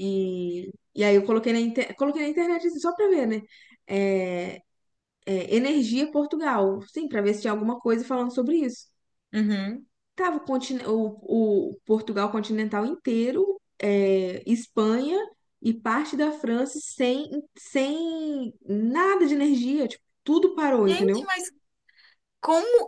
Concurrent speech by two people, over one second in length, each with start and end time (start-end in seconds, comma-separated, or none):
none